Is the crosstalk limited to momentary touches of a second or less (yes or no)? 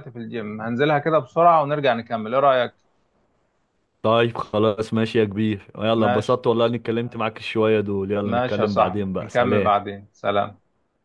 no